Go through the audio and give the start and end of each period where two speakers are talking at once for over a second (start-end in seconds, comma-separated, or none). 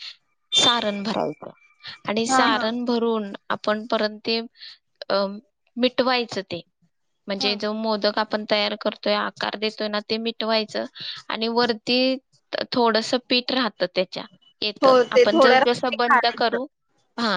14.8-16.6